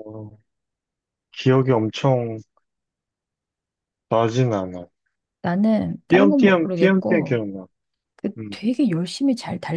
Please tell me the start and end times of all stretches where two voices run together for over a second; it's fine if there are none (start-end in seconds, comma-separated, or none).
6.1-7.4